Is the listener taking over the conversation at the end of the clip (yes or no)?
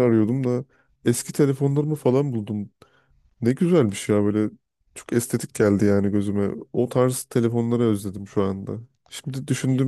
no